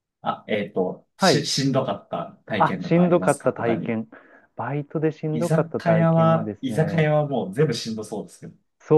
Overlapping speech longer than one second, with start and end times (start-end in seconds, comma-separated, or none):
2.6-4.0, 5.3-7.1